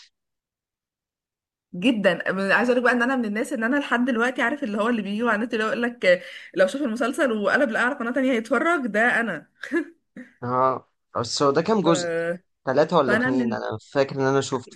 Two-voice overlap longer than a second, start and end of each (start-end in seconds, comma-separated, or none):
none